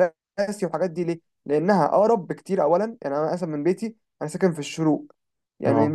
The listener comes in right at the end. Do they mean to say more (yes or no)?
no